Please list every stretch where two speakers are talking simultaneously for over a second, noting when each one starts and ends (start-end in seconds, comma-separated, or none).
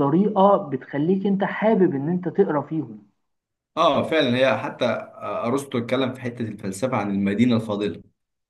none